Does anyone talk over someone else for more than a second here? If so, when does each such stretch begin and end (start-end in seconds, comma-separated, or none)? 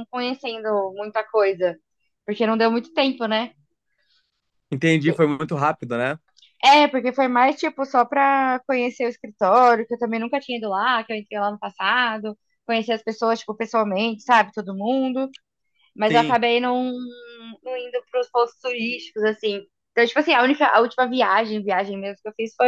none